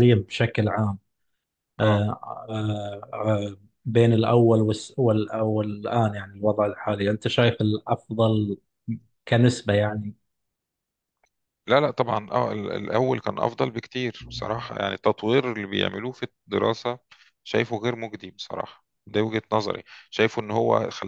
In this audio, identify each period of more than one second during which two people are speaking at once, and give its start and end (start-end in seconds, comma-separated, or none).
none